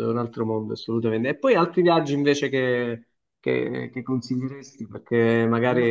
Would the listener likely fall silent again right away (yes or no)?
no